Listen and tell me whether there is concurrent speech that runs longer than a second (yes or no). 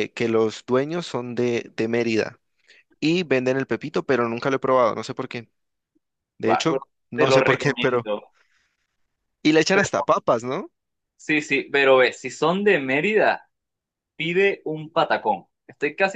yes